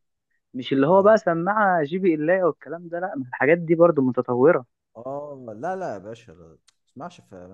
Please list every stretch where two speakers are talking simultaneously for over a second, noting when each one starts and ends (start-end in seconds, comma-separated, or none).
none